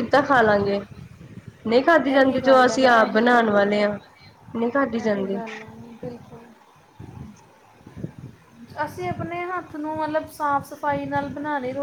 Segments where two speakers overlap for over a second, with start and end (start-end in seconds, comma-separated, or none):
2.1-3.5